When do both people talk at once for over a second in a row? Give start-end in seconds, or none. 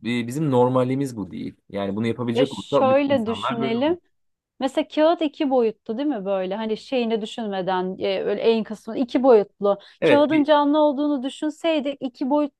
2.3-4.0